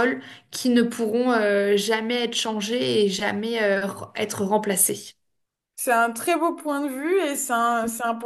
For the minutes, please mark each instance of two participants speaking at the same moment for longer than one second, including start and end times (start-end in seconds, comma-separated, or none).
none